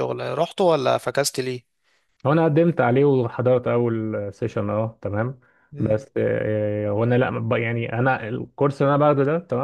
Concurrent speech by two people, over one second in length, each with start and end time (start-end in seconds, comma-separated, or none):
none